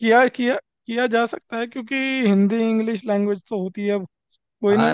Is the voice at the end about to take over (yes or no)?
no